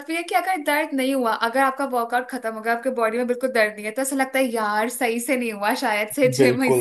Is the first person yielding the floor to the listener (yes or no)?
no